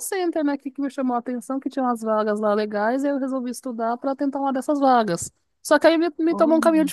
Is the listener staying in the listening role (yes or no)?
yes